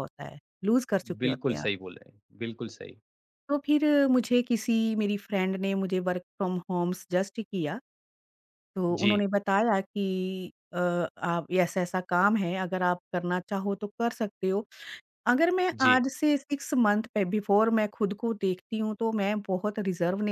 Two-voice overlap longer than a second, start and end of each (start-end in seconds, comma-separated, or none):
none